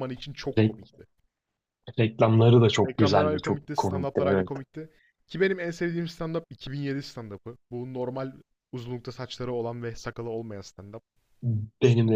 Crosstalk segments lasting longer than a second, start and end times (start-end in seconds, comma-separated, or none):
2.9-4.5